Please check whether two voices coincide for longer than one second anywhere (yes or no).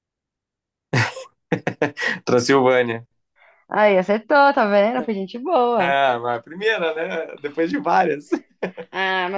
no